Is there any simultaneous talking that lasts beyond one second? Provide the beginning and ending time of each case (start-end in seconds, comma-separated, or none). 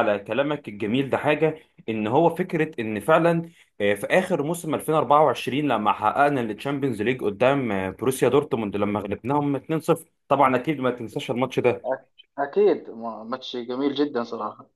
none